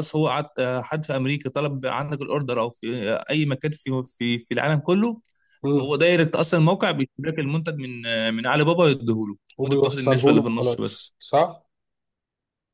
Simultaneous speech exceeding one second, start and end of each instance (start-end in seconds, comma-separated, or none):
9.6-11.1